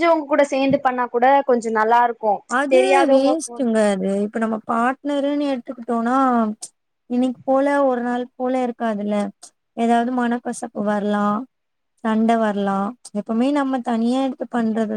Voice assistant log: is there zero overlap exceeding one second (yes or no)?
yes